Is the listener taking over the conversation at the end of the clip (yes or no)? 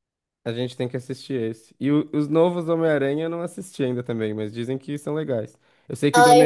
no